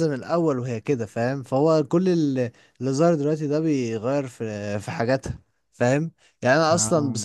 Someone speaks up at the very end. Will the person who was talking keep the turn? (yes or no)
yes